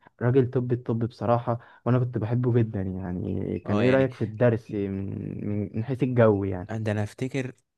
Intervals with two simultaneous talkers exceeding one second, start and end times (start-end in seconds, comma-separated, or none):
none